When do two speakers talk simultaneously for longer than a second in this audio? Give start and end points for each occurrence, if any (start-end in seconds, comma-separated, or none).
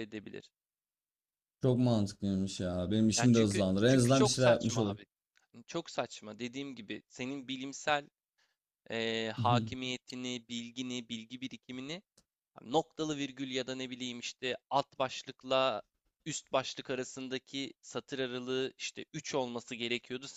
3.2-5.0